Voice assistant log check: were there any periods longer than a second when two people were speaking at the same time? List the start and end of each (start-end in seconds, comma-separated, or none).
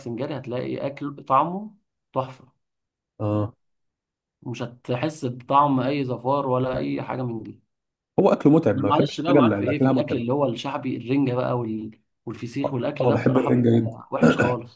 8.7-10.2, 12.6-14.0